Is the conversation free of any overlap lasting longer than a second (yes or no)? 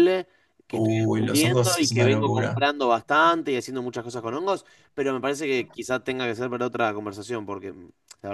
no